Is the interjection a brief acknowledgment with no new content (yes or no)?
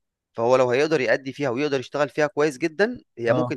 yes